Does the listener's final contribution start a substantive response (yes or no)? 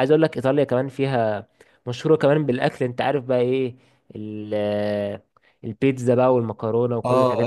yes